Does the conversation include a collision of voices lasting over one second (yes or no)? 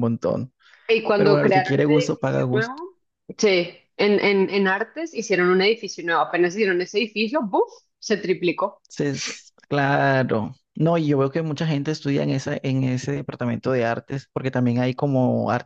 yes